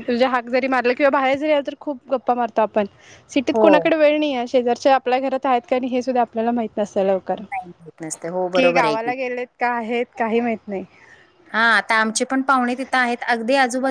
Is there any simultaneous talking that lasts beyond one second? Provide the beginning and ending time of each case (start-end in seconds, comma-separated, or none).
7.4-9.1